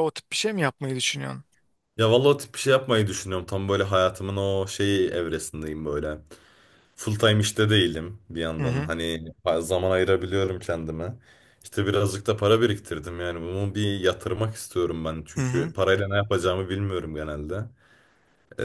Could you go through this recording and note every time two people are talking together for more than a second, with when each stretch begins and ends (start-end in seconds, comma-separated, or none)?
none